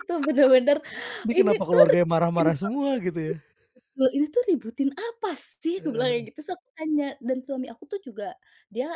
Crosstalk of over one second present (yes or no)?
yes